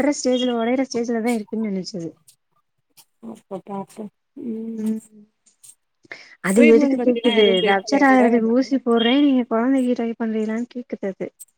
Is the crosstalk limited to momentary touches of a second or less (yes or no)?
no